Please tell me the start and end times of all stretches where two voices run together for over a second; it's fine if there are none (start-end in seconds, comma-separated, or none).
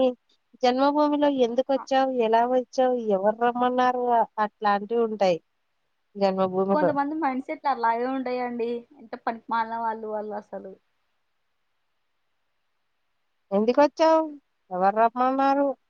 none